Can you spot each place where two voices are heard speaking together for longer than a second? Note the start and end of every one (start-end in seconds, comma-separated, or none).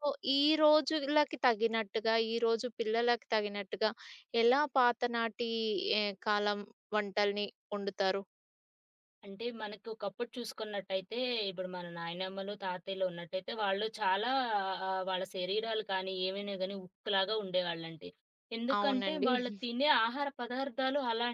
none